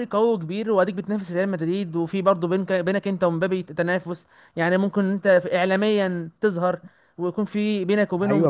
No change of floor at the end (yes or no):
no